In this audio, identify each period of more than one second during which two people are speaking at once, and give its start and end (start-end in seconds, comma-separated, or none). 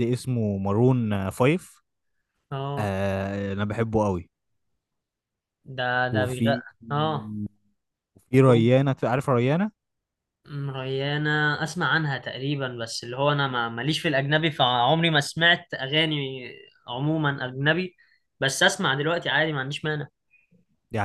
none